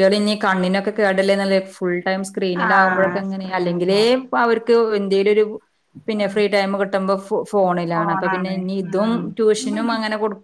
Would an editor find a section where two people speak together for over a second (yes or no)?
yes